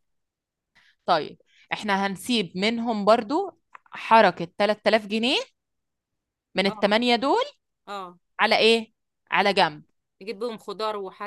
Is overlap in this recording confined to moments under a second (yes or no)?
yes